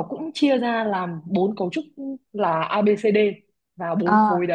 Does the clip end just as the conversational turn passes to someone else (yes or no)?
no